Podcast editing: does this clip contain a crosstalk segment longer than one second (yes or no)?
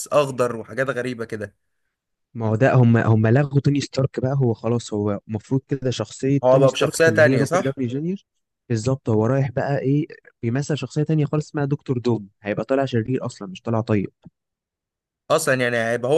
yes